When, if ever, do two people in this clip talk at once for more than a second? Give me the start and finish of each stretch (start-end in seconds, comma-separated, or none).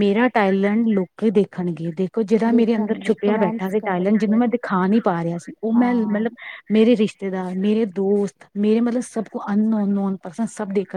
2.5-4.4